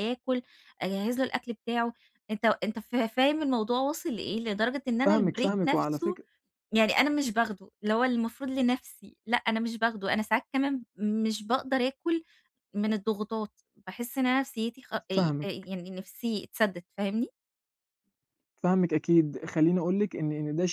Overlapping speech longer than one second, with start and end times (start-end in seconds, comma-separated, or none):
5.0-6.2